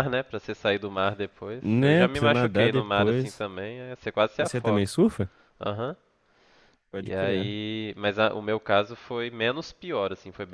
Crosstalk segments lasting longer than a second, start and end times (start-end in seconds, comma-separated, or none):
1.6-3.5